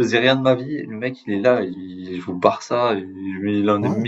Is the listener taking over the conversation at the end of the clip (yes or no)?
no